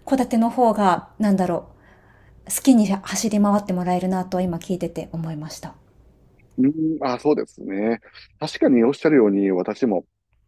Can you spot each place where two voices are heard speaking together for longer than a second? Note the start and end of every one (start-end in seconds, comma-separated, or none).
none